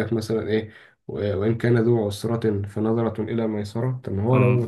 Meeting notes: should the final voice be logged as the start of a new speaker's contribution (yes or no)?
no